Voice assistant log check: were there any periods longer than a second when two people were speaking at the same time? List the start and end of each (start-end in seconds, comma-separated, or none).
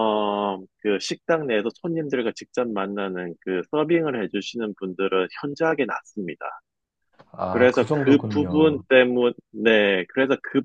7.5-8.8